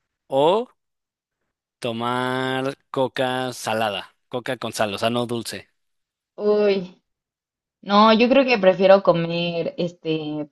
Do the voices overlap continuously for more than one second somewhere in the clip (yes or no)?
no